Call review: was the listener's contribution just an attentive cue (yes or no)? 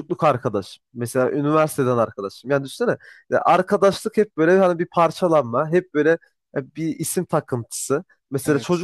yes